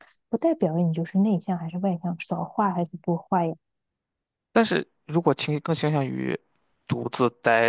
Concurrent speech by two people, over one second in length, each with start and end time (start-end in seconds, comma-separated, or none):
none